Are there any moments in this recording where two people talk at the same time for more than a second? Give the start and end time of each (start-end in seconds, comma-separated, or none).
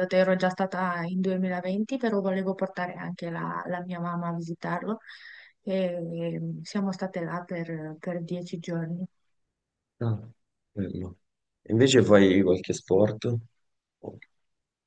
none